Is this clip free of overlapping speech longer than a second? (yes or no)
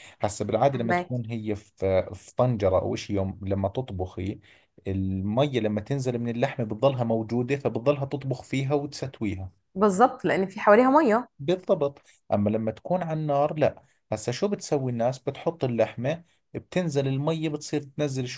yes